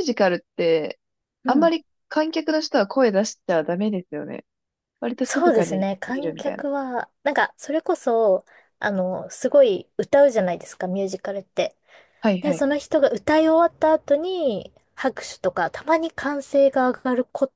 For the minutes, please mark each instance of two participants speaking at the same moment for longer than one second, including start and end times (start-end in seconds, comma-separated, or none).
5.2-6.7